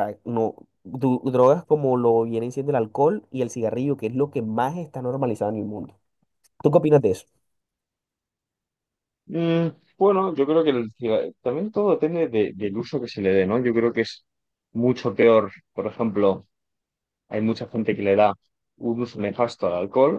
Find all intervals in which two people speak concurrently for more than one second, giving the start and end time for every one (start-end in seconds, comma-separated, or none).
none